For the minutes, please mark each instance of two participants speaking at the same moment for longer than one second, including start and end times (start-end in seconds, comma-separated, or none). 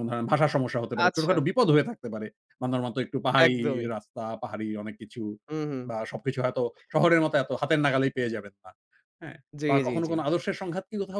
none